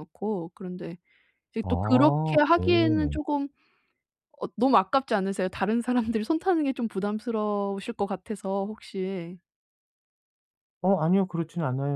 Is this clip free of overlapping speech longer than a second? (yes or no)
no